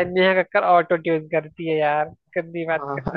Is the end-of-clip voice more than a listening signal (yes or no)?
yes